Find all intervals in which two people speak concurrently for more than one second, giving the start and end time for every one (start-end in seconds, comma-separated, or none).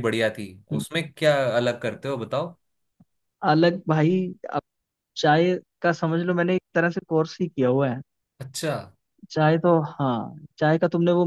none